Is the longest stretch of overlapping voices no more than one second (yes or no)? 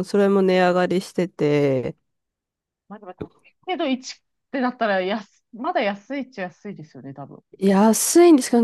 yes